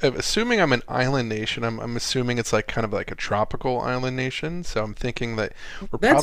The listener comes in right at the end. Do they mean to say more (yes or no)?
yes